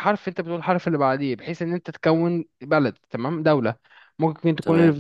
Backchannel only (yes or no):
yes